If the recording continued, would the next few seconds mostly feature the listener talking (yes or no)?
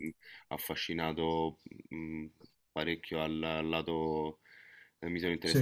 no